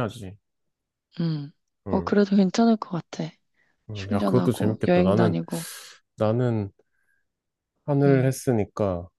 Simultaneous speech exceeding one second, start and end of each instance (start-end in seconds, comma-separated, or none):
3.9-5.4